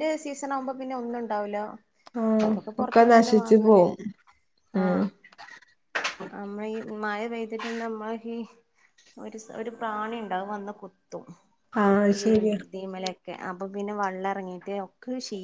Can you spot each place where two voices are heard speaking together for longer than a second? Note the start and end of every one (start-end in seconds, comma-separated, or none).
none